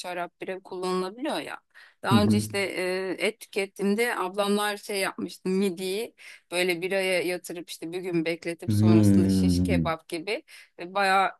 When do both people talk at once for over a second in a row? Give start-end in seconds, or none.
8.7-10.0